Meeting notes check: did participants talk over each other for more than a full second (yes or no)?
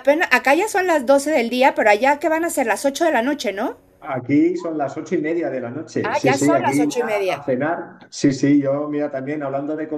yes